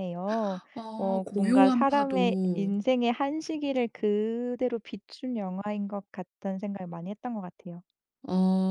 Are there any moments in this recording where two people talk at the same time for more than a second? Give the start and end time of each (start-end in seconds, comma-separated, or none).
1.0-2.7